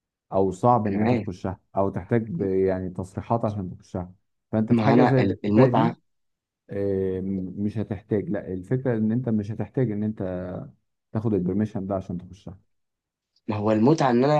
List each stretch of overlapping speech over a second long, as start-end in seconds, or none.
4.7-5.9